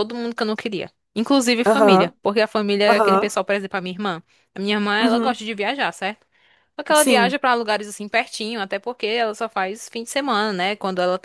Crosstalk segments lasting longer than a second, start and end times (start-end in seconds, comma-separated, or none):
none